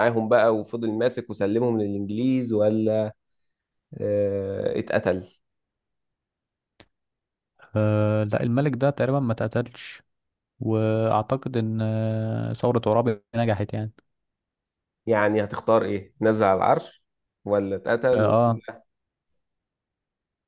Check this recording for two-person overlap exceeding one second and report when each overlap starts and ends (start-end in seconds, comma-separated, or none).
none